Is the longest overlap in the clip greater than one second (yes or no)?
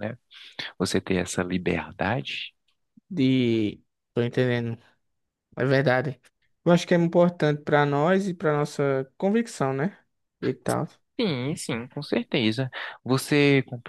no